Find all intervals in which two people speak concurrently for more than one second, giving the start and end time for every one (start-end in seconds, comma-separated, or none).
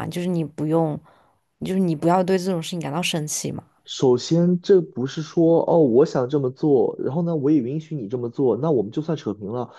none